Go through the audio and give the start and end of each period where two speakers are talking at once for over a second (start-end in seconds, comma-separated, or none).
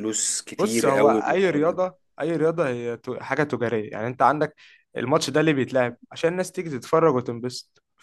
0.6-1.8